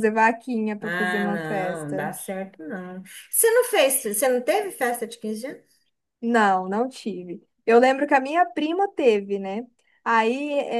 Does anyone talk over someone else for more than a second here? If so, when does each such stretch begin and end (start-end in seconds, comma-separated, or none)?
0.8-2.1